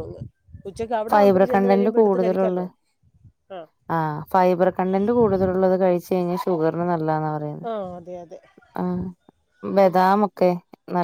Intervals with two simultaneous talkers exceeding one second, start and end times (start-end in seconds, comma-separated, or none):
1.1-2.6